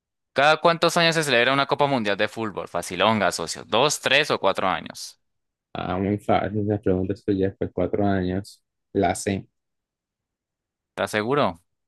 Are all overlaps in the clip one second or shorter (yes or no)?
yes